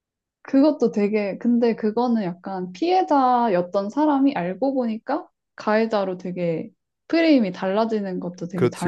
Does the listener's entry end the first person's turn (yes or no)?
yes